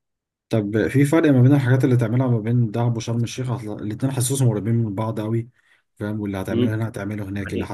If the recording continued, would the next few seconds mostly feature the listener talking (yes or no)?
yes